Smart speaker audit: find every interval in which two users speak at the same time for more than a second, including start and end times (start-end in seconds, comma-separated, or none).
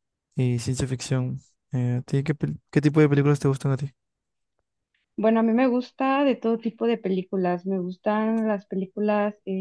none